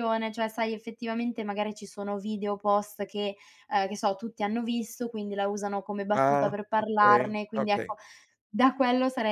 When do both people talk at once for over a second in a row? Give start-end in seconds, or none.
6.1-8.0